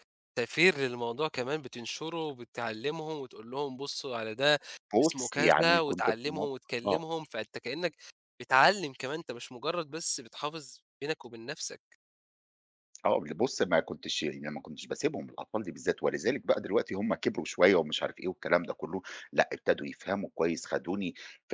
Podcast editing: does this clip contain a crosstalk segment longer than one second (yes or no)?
yes